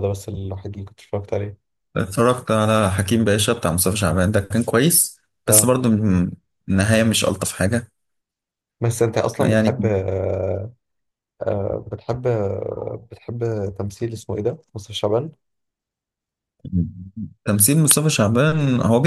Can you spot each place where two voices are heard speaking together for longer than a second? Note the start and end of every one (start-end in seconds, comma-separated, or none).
none